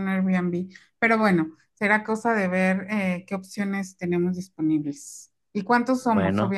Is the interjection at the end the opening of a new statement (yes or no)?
no